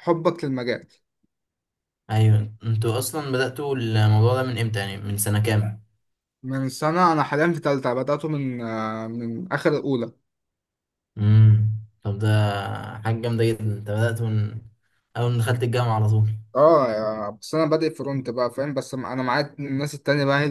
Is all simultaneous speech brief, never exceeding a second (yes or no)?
yes